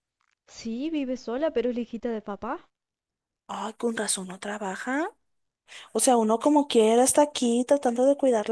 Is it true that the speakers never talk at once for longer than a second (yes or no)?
yes